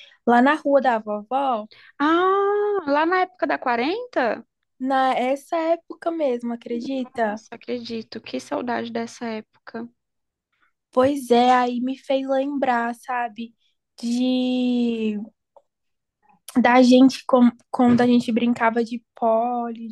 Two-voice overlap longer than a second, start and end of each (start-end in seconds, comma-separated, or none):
none